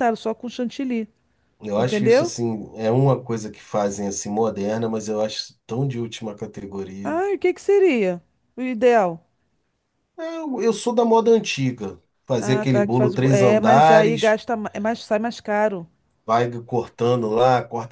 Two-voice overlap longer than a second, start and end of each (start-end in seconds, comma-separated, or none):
12.4-14.4